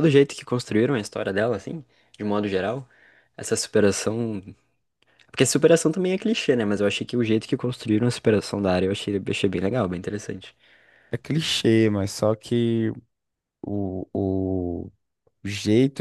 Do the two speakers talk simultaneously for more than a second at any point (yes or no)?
no